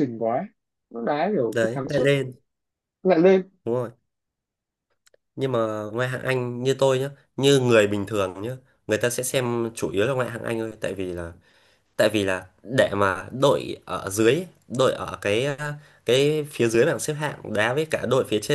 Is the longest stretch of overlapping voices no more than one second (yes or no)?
yes